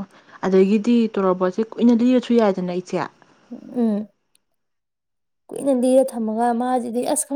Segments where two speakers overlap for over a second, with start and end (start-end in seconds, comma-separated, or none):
none